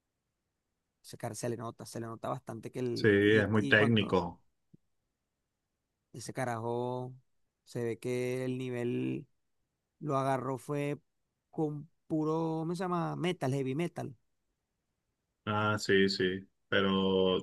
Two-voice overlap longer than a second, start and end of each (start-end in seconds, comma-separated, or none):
2.9-4.2